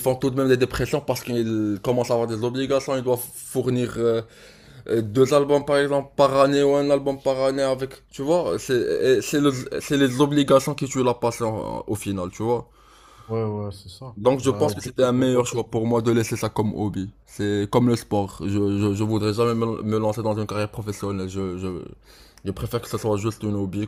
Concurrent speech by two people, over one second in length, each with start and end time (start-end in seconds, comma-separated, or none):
14.2-15.7